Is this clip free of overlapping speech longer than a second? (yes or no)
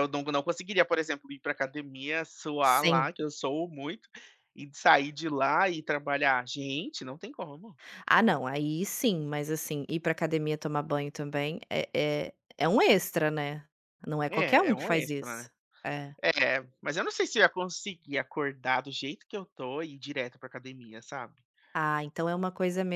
no